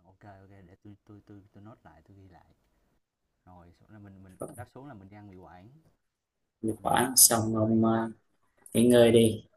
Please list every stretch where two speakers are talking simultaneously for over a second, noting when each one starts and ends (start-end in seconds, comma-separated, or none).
6.7-8.1